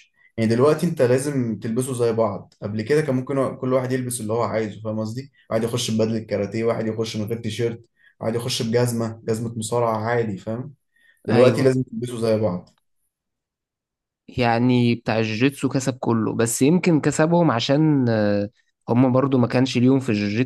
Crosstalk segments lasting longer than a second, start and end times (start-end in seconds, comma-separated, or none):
none